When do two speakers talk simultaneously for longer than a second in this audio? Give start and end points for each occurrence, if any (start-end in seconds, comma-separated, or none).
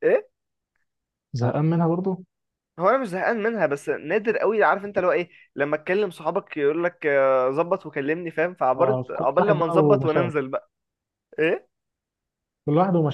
8.7-10.4